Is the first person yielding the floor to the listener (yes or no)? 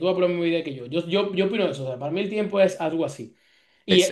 no